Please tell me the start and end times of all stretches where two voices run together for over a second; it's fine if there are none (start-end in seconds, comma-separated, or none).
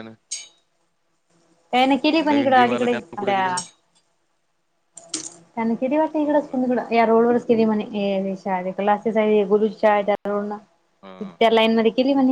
2.3-3.5